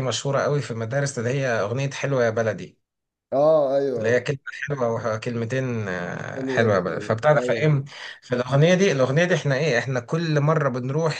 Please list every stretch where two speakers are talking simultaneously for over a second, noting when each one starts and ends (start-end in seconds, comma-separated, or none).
6.3-7.8